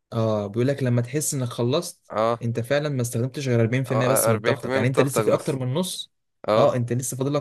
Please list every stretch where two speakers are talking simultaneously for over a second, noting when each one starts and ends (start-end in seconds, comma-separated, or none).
3.9-5.6